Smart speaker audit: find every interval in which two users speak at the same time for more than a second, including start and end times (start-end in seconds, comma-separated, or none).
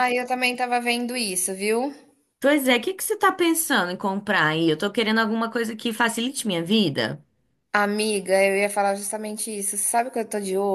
none